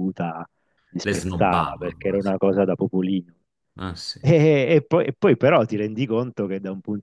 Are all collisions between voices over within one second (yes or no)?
no